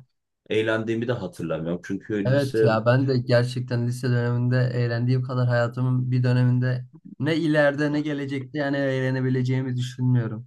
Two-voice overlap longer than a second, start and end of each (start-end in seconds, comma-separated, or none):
none